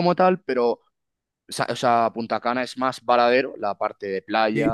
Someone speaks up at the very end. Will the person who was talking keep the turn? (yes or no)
yes